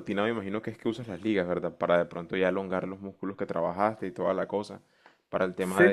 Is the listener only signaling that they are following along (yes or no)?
yes